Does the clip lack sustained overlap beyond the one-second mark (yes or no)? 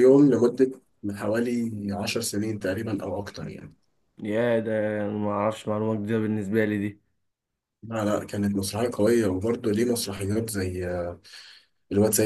yes